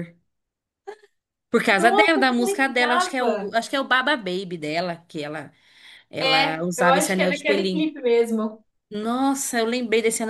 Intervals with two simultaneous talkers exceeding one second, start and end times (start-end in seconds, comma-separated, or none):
1.8-3.5, 6.2-7.9